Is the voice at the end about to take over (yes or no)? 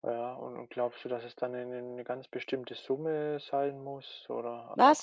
yes